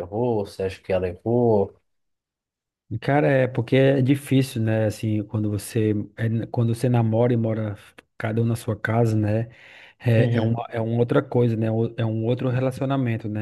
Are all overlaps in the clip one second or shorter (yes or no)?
yes